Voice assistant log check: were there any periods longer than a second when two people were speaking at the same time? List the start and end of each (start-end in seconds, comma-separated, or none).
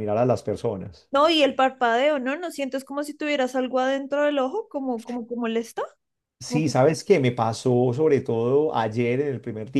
none